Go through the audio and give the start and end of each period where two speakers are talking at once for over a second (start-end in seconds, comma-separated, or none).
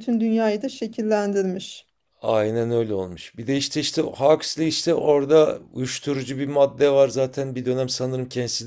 none